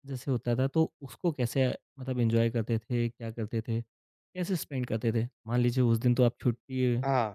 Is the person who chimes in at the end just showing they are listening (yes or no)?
yes